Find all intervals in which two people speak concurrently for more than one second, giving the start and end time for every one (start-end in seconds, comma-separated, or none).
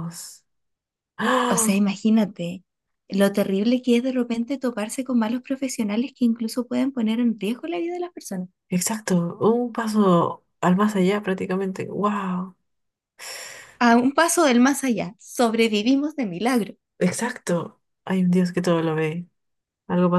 none